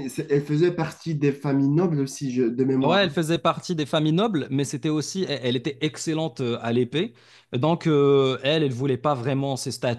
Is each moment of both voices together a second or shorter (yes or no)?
yes